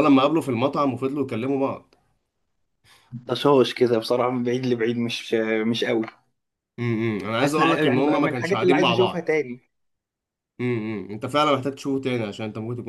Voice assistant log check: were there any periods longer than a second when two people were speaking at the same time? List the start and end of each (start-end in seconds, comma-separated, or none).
7.4-9.3